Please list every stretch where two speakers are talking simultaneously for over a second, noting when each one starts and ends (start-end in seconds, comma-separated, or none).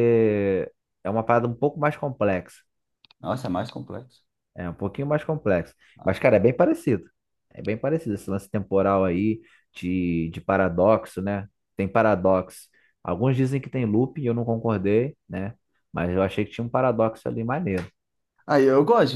none